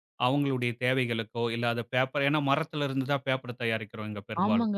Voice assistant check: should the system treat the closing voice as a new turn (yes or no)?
yes